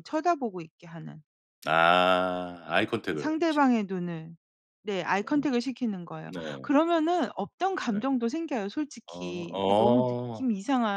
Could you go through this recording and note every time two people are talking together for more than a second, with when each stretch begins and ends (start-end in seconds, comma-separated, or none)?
9.1-10.5